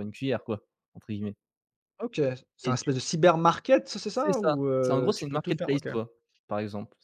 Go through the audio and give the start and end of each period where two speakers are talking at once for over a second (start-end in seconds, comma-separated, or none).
4.1-5.9